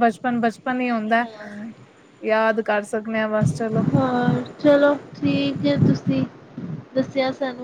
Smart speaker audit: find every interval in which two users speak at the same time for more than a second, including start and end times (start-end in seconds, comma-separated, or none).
none